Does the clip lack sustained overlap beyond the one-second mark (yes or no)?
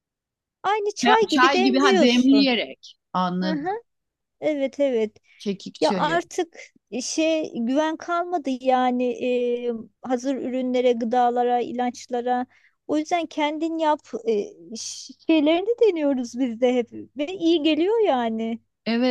no